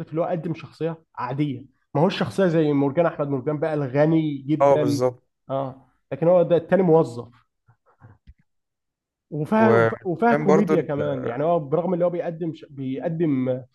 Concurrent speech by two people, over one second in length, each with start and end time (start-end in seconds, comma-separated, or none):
9.6-10.9